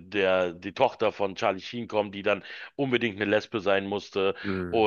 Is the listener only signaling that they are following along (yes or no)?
yes